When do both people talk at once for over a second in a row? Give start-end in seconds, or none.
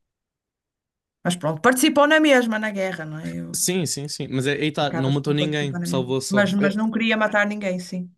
4.8-6.8